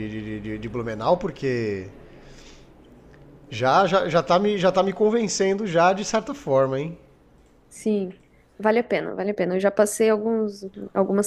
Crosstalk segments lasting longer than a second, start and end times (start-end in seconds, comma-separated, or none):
none